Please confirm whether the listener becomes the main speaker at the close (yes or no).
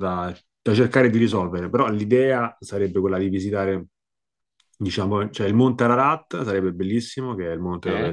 no